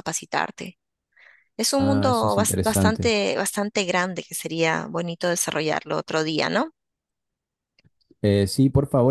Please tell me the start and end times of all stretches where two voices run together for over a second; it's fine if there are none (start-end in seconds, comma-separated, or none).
1.8-3.1